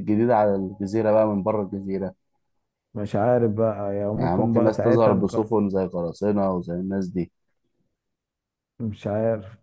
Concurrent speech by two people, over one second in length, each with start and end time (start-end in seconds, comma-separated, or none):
4.2-5.5